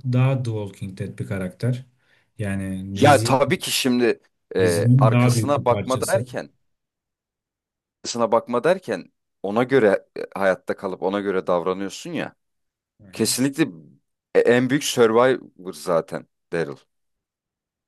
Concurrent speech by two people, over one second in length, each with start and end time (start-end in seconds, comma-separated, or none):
4.6-6.3